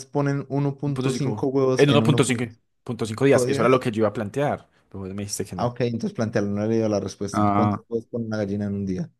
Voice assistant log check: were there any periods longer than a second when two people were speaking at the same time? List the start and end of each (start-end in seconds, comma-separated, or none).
0.9-3.8